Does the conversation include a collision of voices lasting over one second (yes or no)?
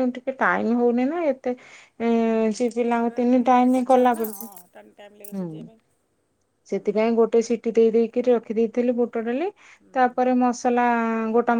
yes